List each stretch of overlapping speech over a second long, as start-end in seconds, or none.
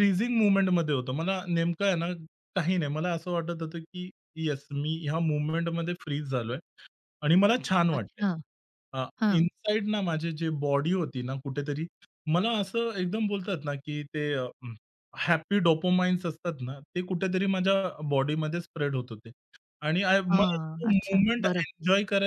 20.3-21.6